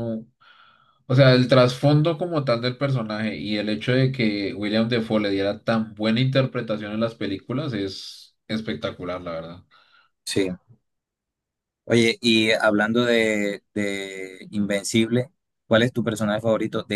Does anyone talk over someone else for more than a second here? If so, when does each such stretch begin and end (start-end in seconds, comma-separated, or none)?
none